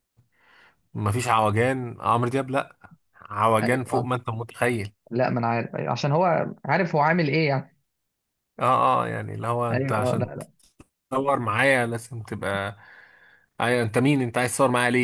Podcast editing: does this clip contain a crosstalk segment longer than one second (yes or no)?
no